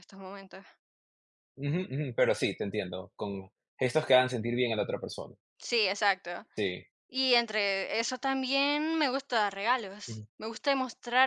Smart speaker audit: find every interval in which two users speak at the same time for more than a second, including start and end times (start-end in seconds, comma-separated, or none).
none